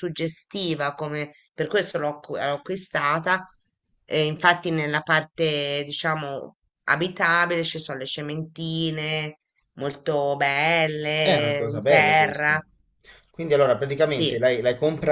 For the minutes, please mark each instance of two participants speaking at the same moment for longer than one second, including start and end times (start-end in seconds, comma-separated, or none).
11.2-12.6